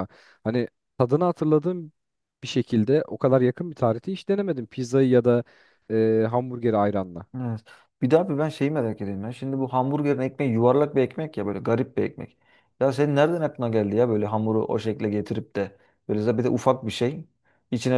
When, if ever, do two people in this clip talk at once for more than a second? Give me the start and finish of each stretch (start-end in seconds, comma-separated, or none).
none